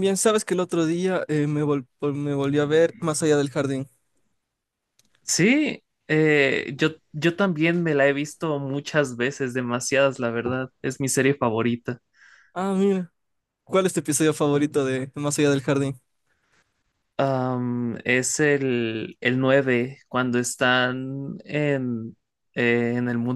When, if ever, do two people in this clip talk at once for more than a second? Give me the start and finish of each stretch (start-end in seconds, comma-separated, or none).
none